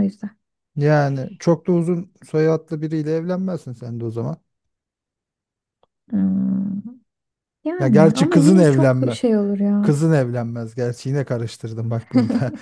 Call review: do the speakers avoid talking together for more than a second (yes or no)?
no